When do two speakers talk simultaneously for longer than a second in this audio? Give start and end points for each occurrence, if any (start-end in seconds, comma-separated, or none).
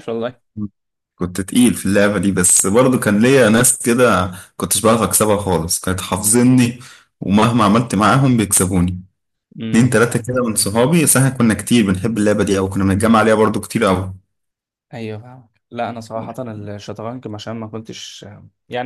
none